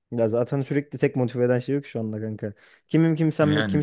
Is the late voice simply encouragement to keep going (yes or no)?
yes